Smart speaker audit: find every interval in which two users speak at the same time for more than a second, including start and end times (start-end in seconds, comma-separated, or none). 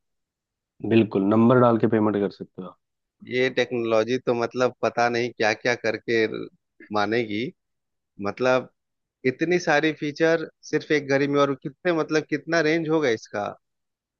none